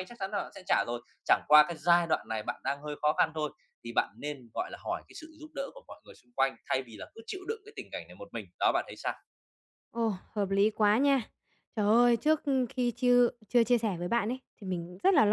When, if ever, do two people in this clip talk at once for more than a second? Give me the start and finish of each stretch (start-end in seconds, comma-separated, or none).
none